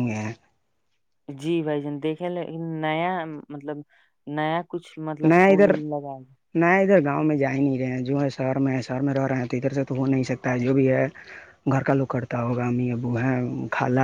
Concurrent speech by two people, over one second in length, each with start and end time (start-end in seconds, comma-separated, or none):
none